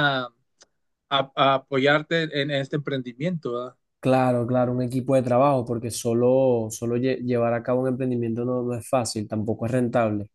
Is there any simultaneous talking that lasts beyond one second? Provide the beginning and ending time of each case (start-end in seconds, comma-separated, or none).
none